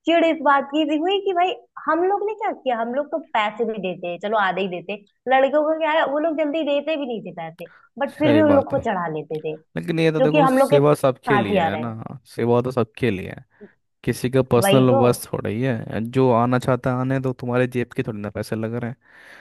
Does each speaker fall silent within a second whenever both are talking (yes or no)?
no